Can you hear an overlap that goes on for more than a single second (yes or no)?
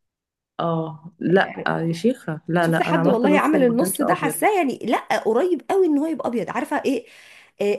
yes